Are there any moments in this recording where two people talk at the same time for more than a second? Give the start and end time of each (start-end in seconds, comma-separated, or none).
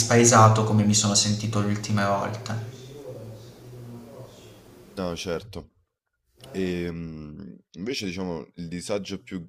none